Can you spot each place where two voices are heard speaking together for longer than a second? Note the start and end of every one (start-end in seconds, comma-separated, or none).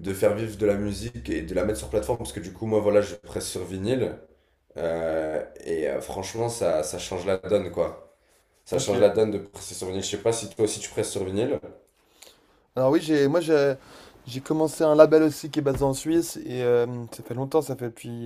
none